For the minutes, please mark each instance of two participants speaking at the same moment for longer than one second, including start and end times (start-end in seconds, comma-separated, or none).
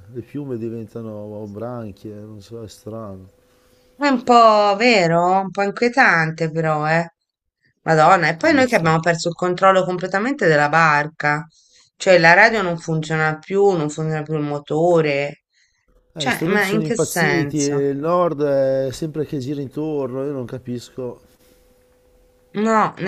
16.1-17.9